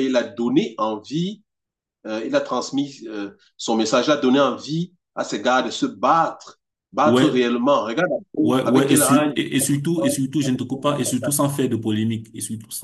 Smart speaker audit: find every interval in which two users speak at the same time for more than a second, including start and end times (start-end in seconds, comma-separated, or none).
8.6-10.2